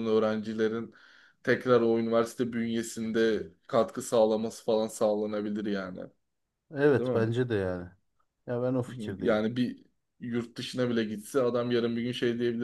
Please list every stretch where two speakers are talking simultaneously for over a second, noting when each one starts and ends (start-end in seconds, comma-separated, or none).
none